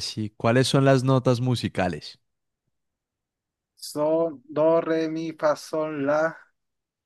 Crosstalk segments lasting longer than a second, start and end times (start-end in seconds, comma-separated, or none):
none